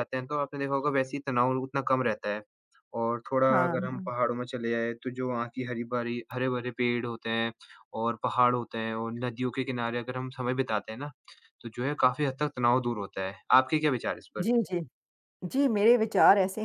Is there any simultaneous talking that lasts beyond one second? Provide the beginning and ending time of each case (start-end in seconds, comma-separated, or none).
none